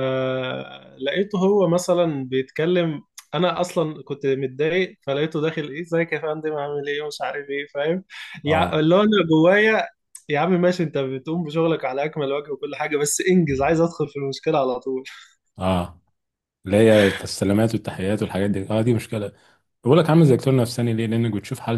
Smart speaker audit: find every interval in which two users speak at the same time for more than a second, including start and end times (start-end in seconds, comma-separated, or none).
none